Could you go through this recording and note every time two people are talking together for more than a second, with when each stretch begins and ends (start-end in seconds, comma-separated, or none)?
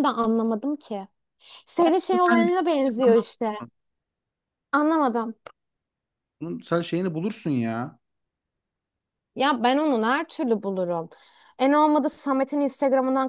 2.1-3.5